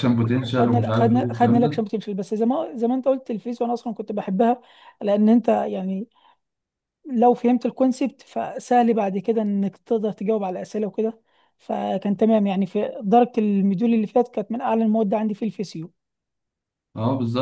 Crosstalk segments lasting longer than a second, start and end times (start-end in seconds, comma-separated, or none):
0.5-1.8